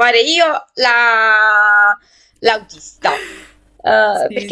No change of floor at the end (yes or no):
yes